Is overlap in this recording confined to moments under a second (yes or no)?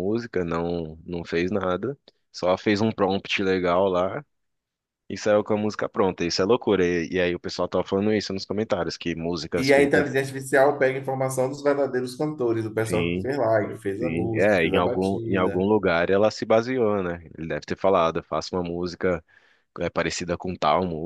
no